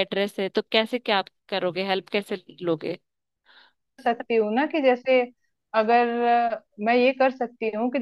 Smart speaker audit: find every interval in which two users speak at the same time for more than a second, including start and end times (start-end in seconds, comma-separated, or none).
none